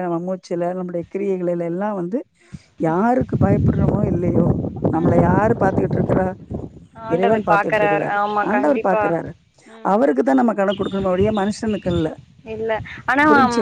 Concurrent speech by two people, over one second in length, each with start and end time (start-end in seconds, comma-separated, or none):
7.1-9.0